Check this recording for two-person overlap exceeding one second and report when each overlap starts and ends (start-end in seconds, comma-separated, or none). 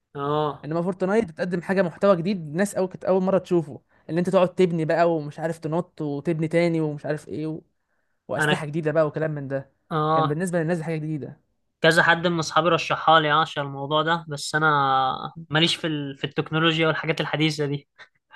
none